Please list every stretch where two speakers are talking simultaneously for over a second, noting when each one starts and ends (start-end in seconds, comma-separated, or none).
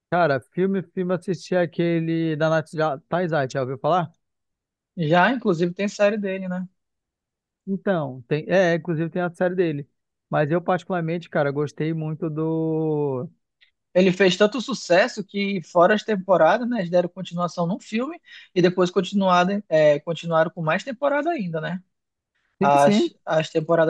none